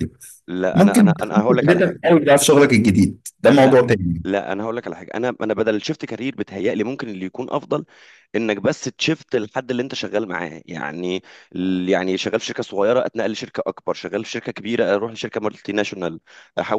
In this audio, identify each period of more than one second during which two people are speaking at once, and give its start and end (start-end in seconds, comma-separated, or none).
0.7-2.0